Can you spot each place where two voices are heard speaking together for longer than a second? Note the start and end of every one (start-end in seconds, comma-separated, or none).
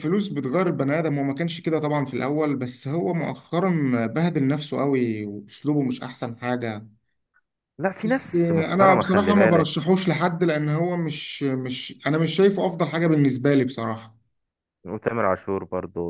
8.0-9.7